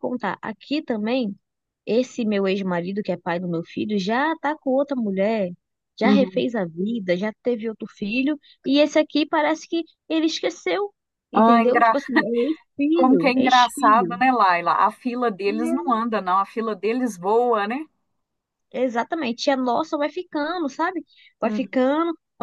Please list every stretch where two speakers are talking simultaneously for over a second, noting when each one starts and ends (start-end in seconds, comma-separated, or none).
12.9-14.2